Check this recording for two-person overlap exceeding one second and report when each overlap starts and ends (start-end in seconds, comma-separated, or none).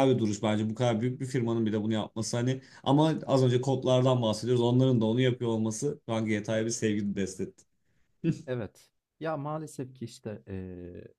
none